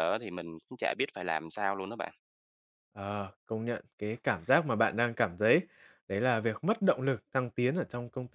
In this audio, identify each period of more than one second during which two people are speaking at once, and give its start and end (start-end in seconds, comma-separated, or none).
none